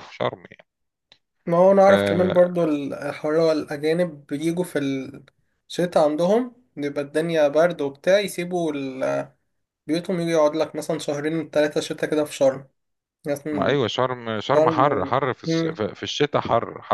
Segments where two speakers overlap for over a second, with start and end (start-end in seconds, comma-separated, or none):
14.5-15.8